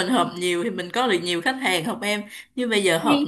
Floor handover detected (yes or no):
no